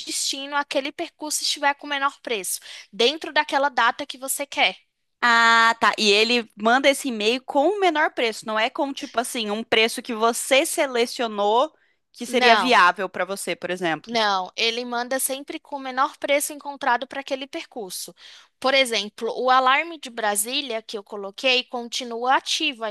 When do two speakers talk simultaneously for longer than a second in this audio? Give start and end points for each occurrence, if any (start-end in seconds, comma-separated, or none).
none